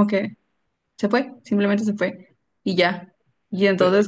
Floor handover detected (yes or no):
no